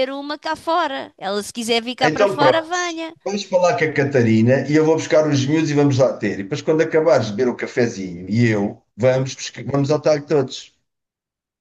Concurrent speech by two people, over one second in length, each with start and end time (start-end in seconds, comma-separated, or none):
none